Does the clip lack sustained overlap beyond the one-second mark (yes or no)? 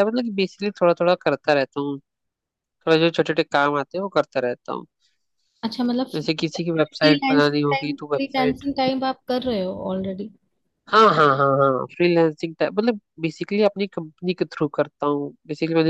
no